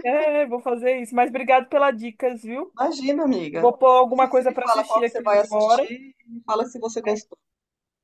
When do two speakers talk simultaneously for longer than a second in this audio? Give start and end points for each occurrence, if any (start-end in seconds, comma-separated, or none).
3.5-5.9